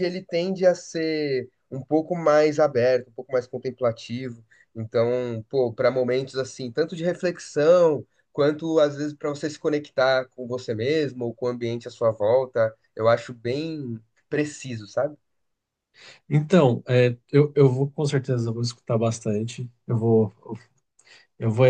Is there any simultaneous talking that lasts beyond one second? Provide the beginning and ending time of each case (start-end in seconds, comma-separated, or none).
none